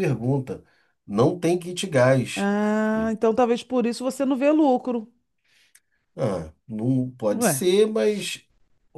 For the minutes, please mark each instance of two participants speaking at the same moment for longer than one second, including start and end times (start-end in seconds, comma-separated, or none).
none